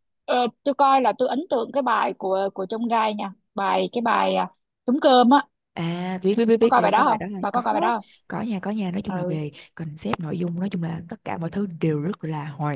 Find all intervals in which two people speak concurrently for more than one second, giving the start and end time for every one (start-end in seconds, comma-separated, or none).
6.6-8.1